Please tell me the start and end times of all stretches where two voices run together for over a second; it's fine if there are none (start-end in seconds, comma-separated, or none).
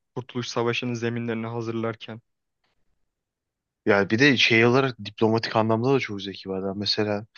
none